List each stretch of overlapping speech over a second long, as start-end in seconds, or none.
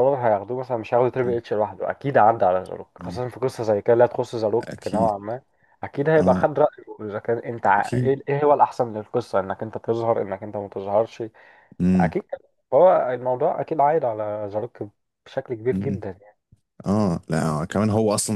none